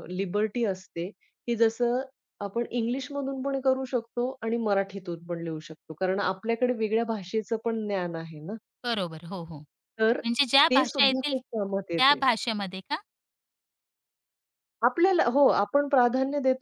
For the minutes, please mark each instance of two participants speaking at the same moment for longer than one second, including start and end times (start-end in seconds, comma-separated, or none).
10.7-12.2